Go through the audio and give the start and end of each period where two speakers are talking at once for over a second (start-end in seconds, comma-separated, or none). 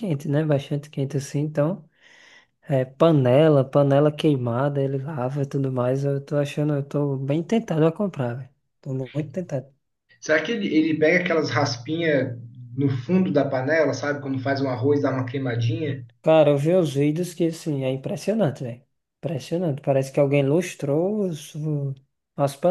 none